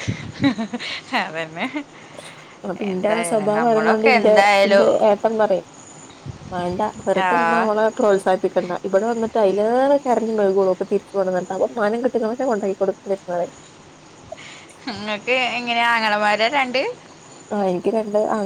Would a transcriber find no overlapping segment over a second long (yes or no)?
no